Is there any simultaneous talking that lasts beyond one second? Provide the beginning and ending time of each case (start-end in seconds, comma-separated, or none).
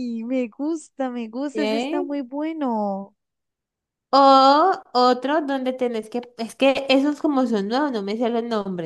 none